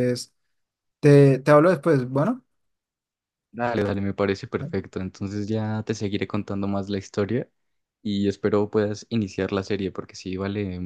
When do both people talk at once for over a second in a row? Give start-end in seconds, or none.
none